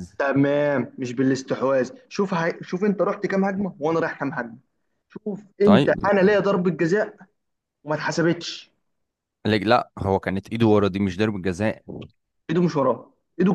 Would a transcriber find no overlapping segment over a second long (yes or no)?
yes